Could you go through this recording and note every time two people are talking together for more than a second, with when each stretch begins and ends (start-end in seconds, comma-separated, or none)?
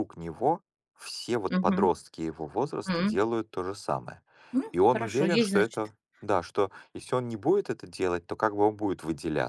4.7-5.9